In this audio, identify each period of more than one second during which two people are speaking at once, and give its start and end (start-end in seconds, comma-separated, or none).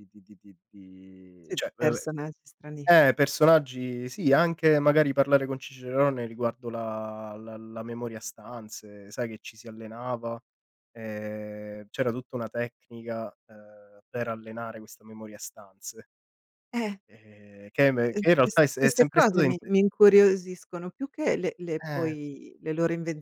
17.8-19.5